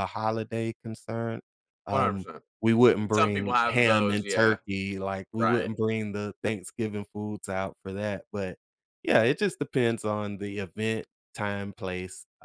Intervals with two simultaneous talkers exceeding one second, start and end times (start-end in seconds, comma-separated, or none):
3.1-4.6